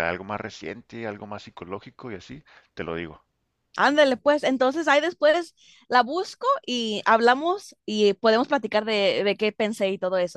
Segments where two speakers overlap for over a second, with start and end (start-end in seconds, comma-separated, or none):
none